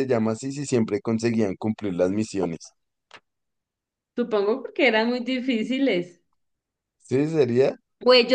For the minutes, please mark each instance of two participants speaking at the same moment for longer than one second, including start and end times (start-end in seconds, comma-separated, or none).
none